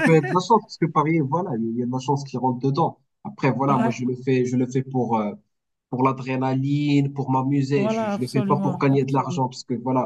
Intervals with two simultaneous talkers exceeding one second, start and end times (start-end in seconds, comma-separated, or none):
7.8-9.4